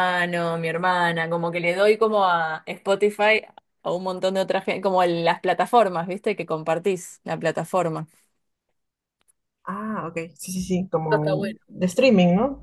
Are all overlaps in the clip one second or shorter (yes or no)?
yes